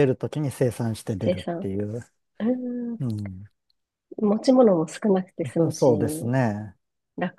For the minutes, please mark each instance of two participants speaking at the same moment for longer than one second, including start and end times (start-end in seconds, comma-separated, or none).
none